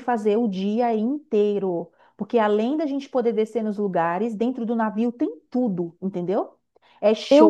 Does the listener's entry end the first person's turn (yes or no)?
no